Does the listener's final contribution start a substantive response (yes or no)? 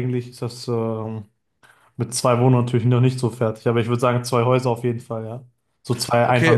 yes